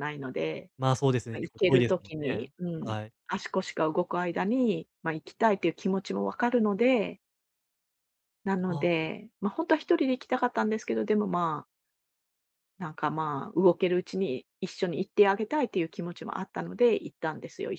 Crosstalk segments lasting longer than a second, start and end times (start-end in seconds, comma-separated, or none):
1.3-3.1